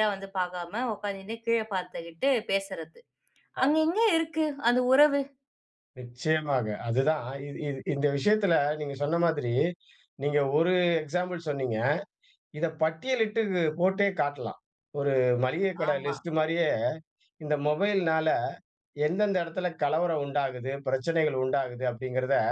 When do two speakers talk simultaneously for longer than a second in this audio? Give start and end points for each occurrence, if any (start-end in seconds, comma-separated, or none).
none